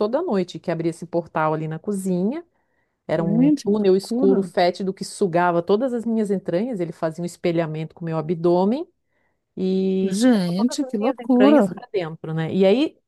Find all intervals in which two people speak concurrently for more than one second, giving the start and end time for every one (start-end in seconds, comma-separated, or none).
3.2-4.5, 10.0-11.7